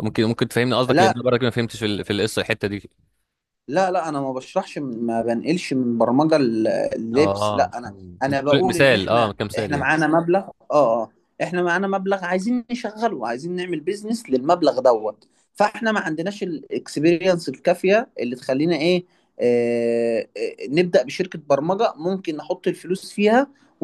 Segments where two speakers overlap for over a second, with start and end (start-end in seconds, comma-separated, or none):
7.1-9.9